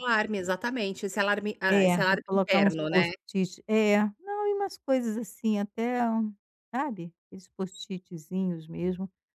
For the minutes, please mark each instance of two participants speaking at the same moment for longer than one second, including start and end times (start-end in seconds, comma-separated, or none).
1.7-3.1